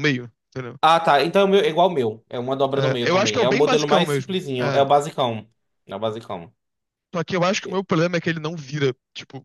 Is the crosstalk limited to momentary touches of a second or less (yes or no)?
no